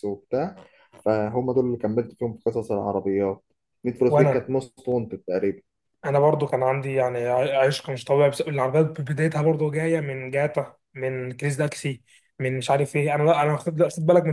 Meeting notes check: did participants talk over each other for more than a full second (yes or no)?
no